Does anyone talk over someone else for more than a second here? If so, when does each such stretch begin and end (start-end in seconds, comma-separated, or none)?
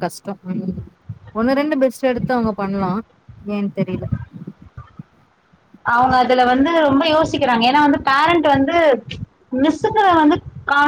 none